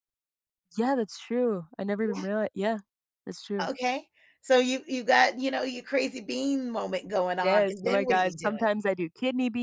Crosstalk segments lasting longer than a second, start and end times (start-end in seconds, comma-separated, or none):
7.4-8.7